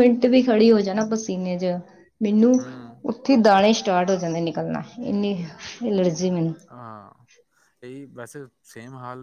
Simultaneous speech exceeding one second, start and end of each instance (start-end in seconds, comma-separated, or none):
none